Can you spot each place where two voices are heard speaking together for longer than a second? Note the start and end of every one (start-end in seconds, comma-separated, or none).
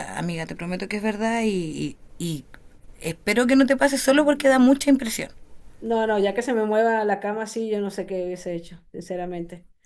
none